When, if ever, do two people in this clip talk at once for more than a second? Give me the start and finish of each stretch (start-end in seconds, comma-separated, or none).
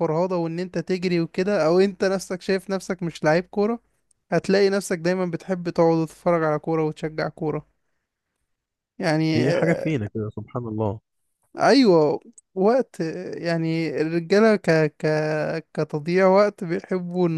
none